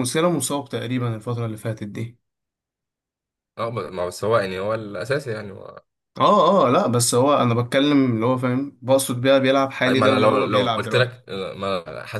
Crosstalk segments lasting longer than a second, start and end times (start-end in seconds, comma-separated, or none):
9.9-11.2